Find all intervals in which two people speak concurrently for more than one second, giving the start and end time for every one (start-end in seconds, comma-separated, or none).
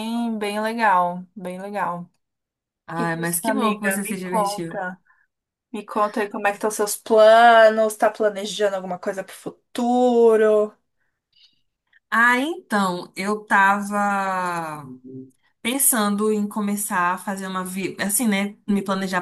3.0-4.8